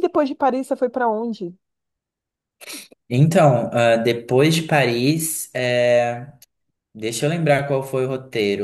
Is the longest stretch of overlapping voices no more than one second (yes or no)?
yes